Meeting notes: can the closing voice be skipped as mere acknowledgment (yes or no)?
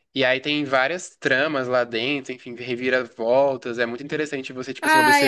no